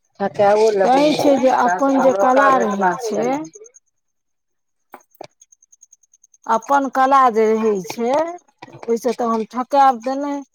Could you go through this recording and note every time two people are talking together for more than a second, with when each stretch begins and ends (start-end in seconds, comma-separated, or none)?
1.5-3.4